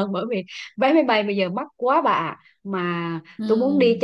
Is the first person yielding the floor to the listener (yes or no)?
no